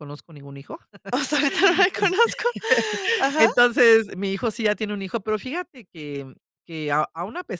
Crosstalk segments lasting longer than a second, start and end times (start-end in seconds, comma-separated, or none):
none